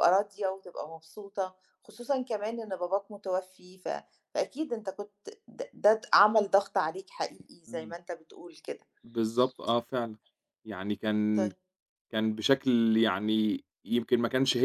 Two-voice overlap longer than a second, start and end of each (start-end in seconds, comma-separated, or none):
none